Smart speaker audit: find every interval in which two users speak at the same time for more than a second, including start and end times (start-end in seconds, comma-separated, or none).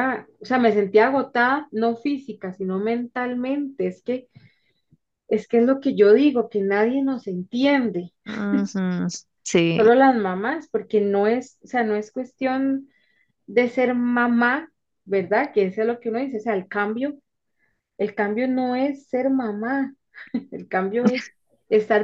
none